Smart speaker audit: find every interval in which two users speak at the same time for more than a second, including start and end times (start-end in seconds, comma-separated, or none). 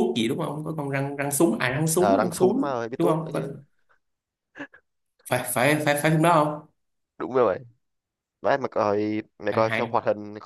2.0-3.4